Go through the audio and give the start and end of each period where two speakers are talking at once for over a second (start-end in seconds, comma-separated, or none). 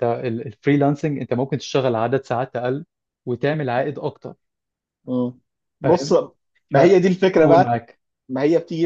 none